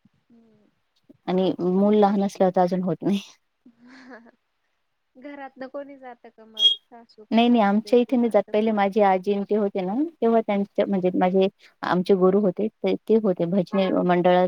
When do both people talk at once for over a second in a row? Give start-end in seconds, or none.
7.3-8.8